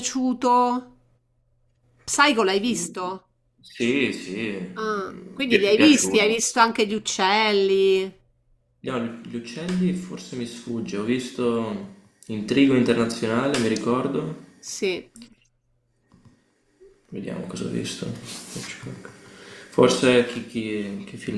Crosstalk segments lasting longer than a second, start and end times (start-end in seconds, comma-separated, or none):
4.7-6.4